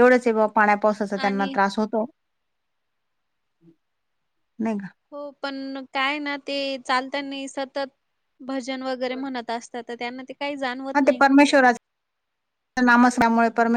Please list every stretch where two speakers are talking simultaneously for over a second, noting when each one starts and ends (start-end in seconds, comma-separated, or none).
none